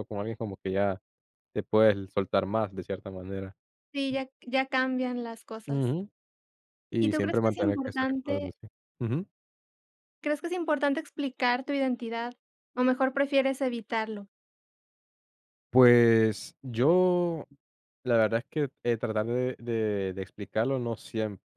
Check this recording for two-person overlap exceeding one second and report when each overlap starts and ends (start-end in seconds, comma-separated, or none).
7.0-8.5